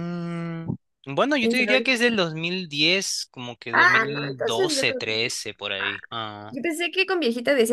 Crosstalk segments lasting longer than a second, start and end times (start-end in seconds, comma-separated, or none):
3.7-5.3